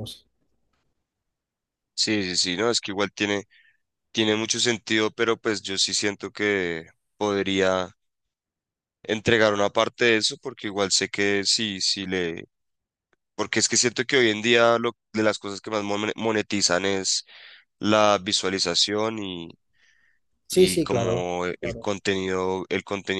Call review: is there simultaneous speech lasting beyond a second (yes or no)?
yes